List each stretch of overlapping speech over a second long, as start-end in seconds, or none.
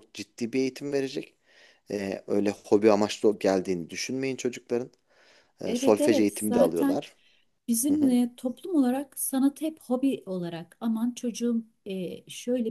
5.7-7.0